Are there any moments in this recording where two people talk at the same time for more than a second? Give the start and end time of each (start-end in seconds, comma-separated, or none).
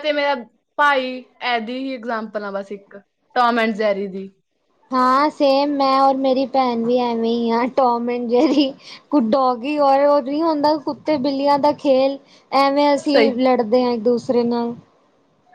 none